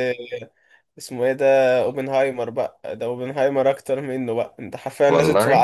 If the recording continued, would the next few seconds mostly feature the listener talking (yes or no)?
no